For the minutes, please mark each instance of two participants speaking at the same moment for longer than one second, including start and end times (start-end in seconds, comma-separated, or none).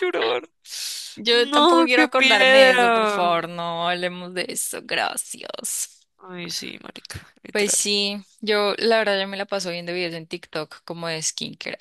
1.3-3.3